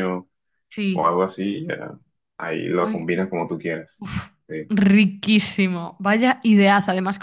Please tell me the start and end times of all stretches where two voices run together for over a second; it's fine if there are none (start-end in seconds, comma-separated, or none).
none